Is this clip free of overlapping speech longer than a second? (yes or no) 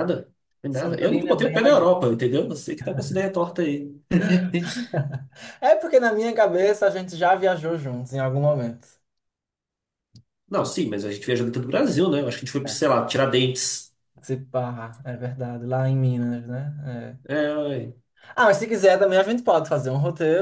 no